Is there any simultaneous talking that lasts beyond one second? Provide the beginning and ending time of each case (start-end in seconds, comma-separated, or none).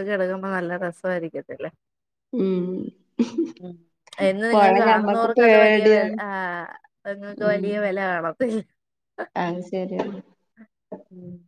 4.5-6.2